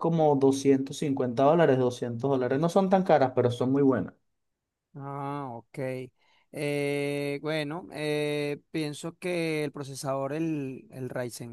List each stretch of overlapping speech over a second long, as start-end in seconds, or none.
none